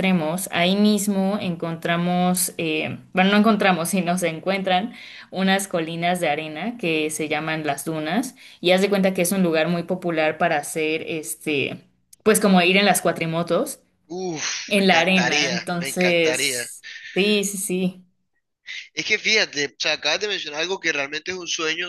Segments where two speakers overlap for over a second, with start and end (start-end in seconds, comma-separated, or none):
14.7-16.6